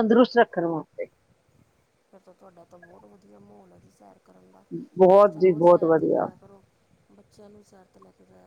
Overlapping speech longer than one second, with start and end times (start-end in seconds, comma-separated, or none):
5.1-6.3